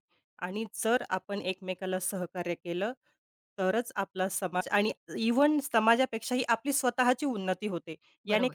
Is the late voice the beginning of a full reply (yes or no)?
no